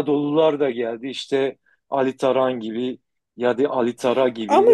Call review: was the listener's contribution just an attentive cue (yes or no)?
yes